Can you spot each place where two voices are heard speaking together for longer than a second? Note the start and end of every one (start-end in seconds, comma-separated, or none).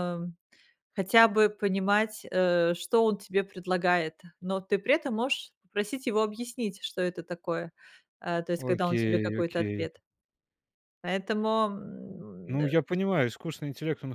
8.6-9.9